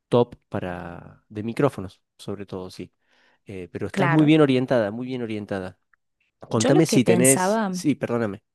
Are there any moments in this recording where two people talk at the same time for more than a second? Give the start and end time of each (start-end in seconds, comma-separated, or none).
6.5-7.8